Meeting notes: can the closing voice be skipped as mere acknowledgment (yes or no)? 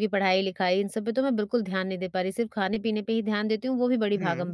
yes